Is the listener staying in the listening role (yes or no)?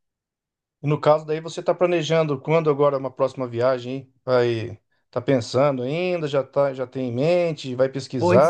no